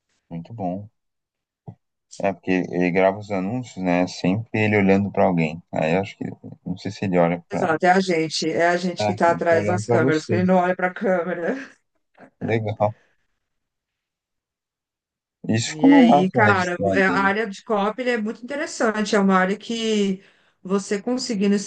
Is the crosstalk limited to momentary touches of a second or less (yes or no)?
no